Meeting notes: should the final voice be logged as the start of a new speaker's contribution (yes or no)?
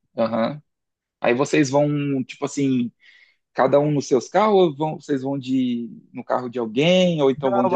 yes